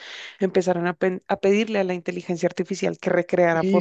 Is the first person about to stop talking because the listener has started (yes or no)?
yes